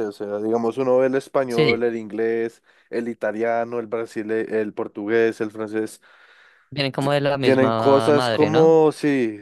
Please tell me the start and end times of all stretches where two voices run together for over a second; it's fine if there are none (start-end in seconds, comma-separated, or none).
7.4-8.8